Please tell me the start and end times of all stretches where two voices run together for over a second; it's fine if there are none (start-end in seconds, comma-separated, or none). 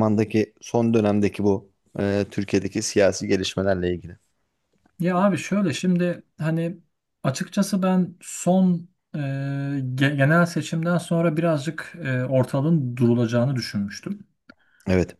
none